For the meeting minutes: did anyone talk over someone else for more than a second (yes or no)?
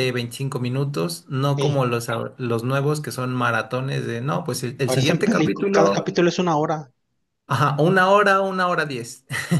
yes